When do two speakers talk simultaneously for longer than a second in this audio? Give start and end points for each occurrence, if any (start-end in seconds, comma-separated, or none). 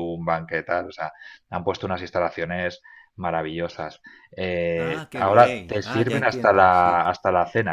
4.8-7.0